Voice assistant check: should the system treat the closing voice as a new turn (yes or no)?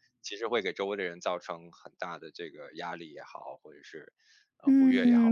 yes